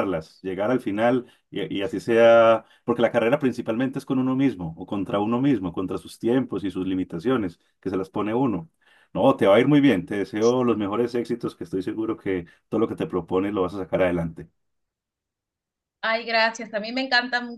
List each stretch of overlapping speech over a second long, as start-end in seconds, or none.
none